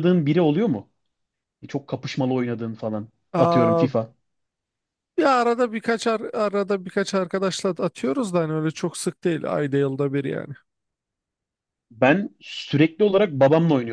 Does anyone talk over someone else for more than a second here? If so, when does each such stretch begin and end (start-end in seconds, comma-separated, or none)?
none